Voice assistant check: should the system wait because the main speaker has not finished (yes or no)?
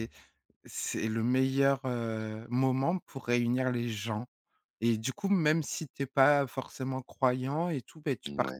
yes